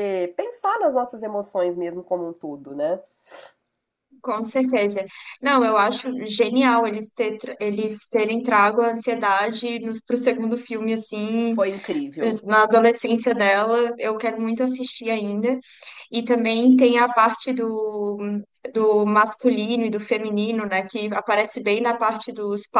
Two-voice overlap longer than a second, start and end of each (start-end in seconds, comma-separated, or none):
none